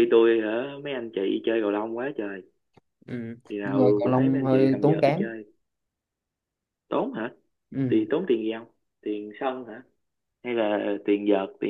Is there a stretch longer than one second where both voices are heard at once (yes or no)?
yes